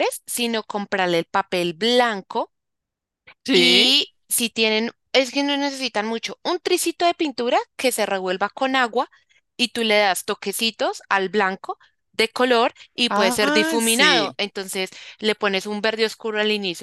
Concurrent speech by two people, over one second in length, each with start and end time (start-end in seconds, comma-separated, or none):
13.1-14.4